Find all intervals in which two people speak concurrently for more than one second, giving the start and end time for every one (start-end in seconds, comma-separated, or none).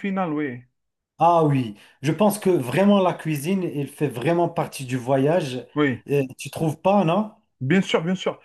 none